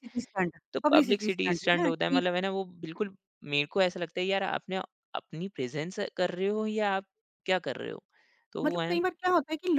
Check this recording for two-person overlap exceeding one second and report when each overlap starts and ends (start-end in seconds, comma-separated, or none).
0.7-2.2